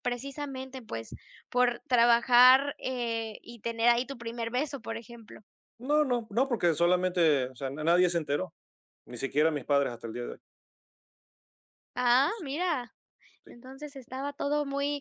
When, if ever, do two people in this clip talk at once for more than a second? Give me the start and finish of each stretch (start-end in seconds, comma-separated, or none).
none